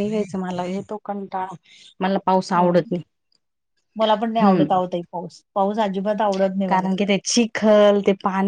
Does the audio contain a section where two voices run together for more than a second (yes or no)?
no